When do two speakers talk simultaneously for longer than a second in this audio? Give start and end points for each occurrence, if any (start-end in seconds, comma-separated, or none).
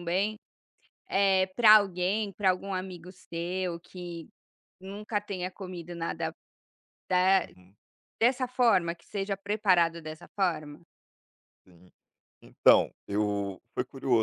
none